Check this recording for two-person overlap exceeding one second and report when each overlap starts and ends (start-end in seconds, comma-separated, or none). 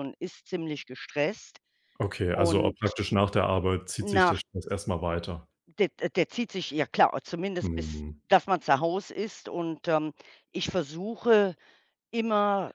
none